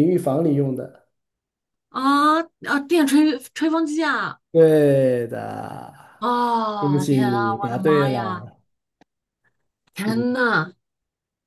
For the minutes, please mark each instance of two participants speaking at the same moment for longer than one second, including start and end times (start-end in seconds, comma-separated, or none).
6.8-8.5